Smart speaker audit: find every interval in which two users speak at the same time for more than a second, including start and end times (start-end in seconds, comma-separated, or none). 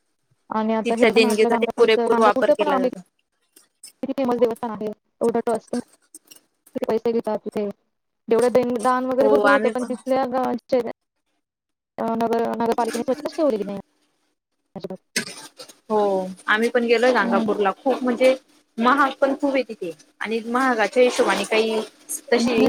0.8-2.9